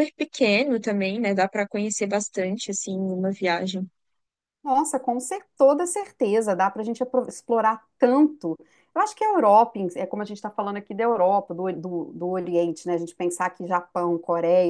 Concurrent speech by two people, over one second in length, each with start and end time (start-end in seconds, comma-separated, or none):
none